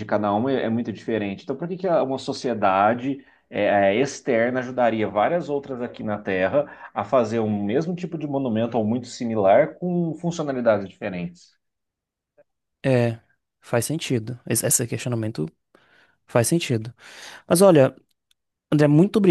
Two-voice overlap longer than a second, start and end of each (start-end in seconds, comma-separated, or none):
none